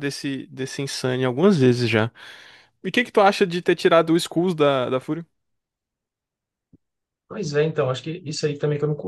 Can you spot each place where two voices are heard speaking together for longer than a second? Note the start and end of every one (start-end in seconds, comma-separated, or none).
none